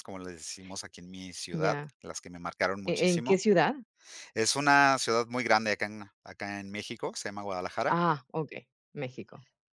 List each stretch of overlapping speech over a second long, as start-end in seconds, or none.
none